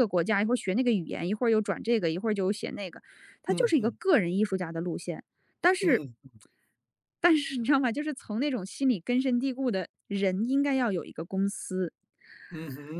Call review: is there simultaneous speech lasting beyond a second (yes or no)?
no